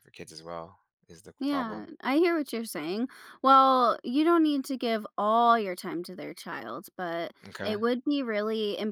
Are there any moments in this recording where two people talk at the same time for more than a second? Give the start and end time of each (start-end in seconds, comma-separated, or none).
none